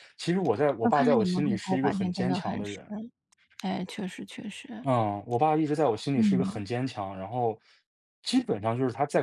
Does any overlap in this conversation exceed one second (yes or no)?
yes